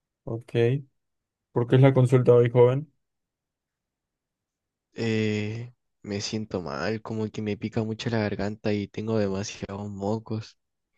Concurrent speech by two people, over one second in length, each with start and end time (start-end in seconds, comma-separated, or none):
none